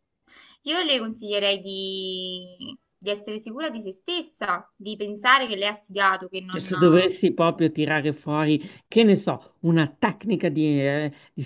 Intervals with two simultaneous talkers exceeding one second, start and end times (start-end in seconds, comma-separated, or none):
none